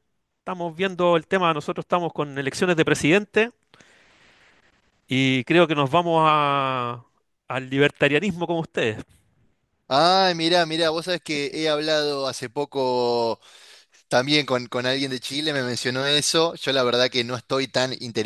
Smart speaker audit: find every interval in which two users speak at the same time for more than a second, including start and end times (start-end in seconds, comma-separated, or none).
none